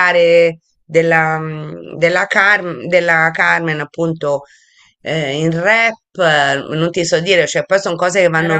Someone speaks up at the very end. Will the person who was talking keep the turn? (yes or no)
no